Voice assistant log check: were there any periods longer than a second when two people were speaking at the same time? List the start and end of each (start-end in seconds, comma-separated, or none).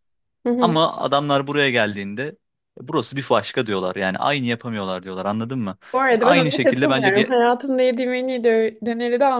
5.9-7.4